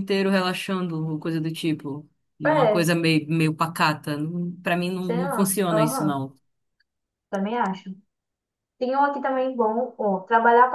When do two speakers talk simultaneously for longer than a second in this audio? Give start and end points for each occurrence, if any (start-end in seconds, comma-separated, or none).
5.0-6.2